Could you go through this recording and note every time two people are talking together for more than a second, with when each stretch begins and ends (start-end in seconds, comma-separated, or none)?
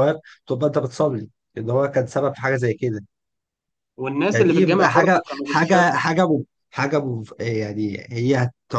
4.3-6.0